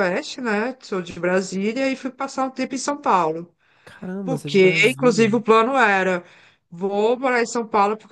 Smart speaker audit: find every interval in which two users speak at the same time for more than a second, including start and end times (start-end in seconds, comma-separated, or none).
4.2-5.4